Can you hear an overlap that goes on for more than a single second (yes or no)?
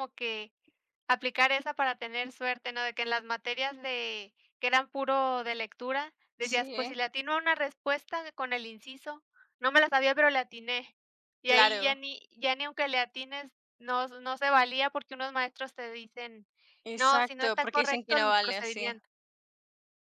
yes